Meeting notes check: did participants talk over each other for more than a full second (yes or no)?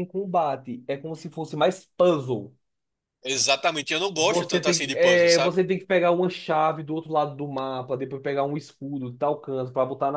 yes